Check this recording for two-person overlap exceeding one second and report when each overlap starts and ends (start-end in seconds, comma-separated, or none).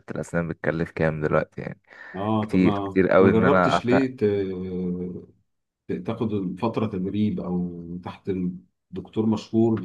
2.4-4.0